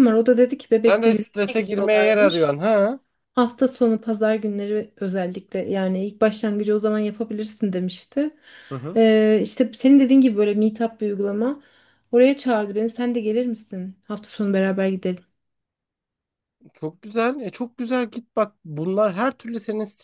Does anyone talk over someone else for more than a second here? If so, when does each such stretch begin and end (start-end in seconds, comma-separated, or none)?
0.9-2.6